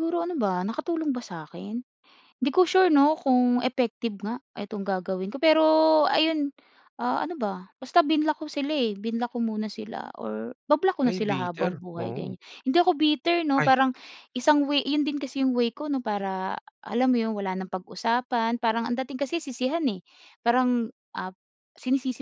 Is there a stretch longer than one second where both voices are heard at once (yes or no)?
yes